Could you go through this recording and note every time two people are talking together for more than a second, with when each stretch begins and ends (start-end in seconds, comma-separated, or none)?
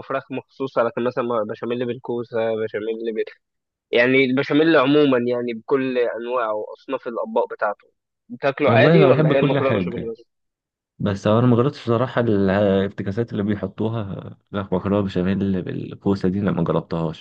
8.7-10.1